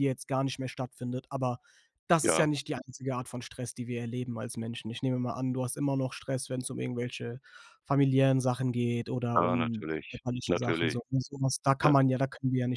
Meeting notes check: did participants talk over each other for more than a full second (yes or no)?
yes